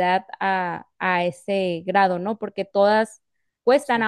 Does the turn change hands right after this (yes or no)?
no